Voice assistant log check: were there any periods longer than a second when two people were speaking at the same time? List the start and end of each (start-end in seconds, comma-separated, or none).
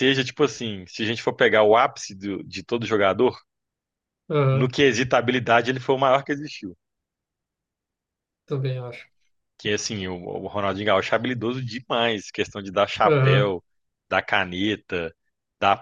none